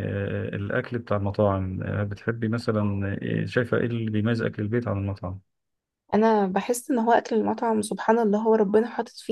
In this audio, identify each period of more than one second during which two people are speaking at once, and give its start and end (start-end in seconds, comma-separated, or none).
none